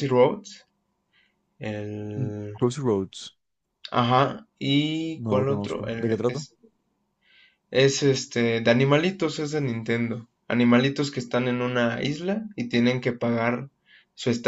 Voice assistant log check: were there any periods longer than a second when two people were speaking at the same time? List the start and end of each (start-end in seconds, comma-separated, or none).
5.2-6.4